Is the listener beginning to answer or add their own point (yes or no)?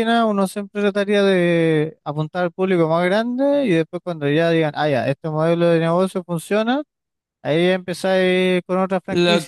yes